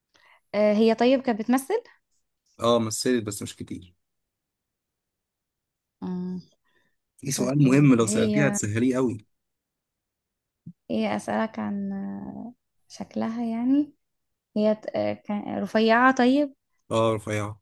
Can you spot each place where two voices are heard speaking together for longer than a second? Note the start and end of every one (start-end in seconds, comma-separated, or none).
7.3-8.6